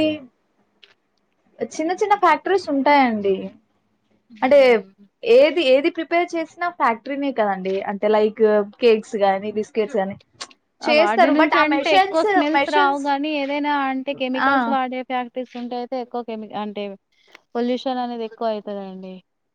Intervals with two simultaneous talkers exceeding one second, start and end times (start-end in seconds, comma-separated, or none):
11.0-13.0